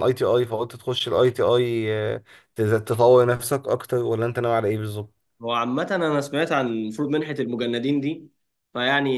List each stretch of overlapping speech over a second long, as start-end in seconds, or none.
none